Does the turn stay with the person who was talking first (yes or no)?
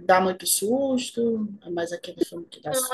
no